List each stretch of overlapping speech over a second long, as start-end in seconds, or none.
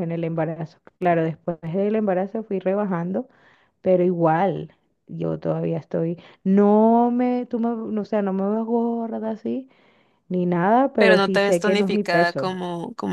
10.9-12.6